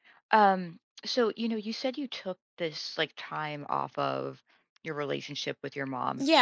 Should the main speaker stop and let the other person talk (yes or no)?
yes